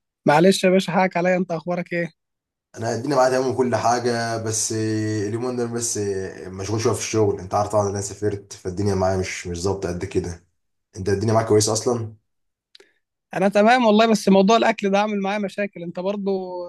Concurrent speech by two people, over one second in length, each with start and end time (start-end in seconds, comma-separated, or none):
none